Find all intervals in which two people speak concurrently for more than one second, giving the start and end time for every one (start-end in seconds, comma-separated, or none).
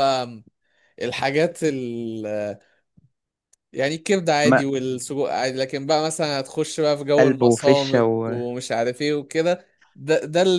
7.2-8.5